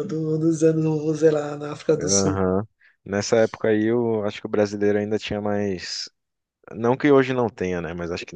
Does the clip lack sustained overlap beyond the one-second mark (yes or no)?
yes